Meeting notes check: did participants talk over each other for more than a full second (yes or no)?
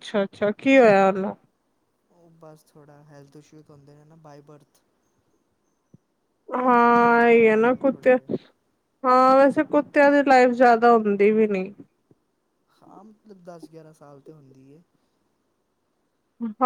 yes